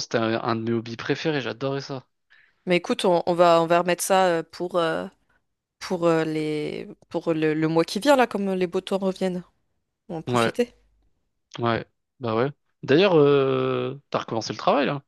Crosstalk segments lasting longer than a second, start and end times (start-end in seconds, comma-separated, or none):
none